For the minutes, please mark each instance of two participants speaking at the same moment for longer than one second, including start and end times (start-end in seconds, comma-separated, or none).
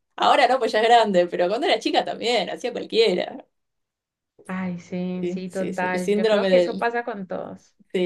5.2-6.9